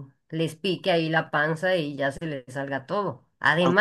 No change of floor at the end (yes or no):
yes